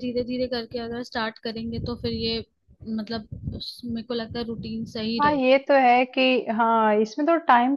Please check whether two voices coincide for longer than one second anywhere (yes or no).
no